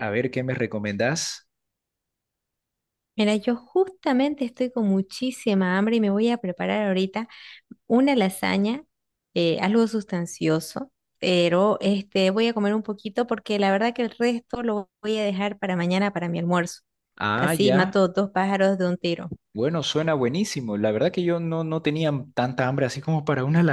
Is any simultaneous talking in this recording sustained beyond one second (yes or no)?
no